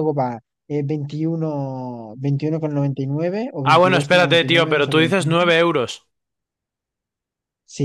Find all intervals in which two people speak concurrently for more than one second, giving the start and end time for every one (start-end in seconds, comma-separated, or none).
3.6-5.5